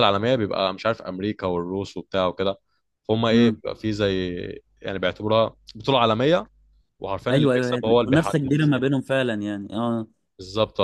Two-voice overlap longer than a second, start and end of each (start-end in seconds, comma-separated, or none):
7.3-8.5